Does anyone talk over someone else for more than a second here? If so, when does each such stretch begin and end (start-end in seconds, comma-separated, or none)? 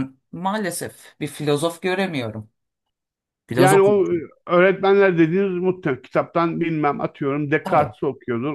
none